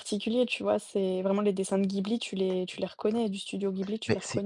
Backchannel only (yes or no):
no